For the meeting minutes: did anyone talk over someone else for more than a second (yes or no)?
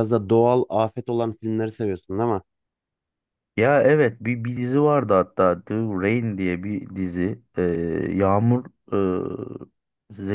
no